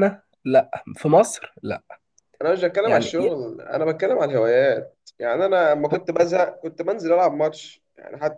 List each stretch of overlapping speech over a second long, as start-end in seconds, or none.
none